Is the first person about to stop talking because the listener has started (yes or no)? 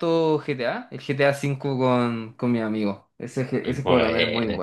no